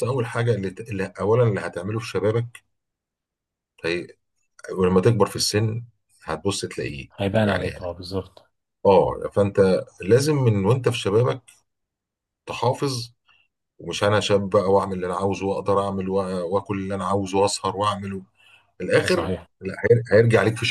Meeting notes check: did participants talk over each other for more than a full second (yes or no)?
no